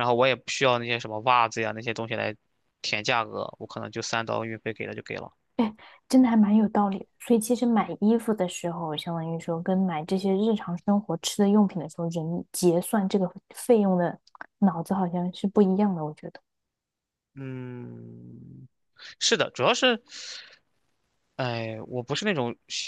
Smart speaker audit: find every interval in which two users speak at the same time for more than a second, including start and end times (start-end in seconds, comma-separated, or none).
none